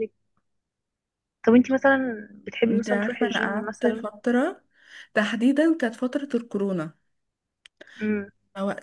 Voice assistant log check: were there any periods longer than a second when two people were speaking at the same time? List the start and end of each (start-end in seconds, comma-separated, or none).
2.7-4.1